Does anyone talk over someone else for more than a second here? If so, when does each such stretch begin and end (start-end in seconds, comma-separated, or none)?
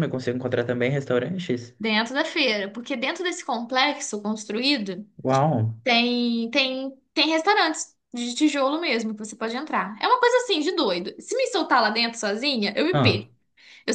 none